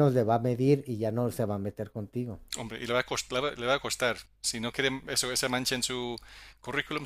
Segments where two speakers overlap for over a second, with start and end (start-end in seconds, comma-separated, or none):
none